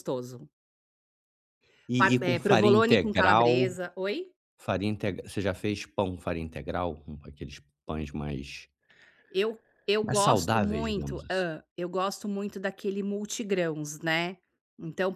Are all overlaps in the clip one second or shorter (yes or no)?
no